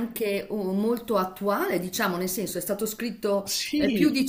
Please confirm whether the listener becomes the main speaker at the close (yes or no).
no